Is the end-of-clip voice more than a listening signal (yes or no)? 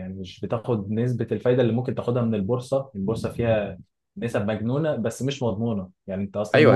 yes